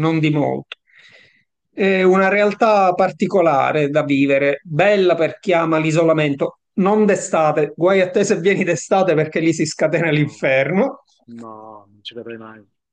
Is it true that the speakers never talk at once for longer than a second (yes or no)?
yes